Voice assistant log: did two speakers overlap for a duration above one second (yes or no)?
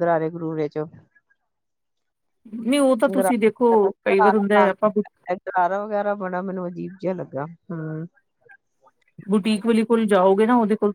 no